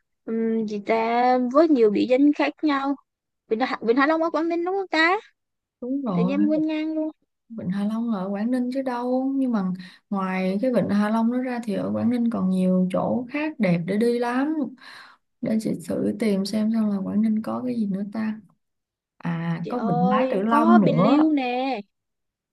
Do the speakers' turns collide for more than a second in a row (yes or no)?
yes